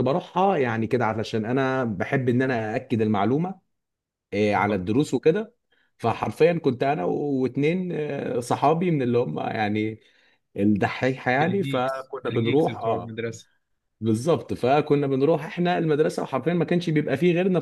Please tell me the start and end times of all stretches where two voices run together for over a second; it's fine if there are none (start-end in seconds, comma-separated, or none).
11.4-13.2